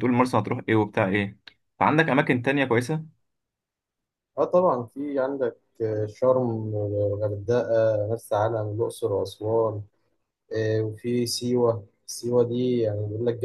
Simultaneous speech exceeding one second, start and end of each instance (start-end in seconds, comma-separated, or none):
none